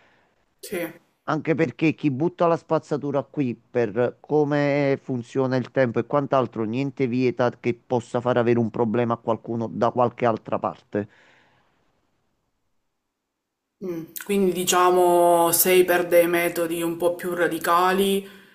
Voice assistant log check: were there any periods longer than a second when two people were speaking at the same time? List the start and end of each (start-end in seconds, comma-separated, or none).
none